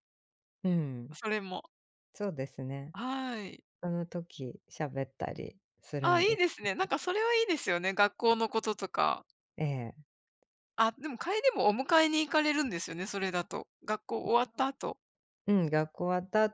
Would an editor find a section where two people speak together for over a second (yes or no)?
no